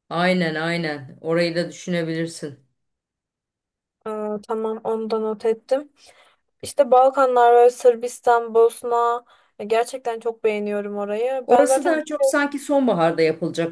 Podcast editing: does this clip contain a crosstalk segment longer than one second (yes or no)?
no